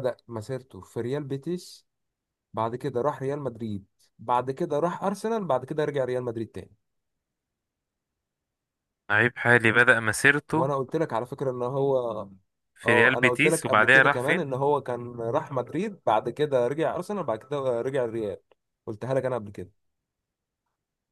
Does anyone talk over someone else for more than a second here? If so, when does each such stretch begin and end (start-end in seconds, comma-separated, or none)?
12.8-14.4